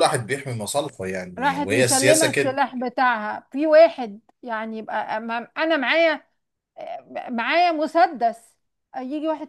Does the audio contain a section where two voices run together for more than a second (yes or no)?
yes